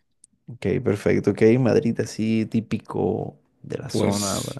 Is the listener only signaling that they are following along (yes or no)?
no